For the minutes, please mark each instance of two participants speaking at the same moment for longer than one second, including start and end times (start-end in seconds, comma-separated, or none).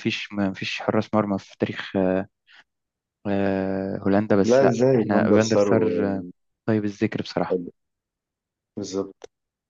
4.5-6.2